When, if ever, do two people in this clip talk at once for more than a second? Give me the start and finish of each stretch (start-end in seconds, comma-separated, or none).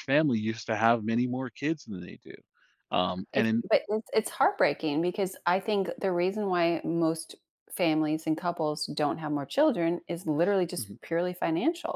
none